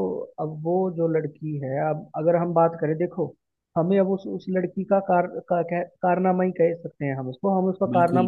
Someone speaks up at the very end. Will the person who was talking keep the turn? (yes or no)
yes